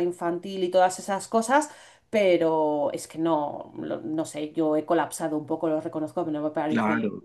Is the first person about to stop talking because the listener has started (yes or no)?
yes